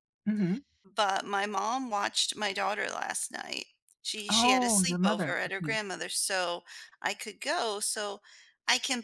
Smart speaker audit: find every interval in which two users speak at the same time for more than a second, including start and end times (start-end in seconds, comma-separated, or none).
4.3-5.8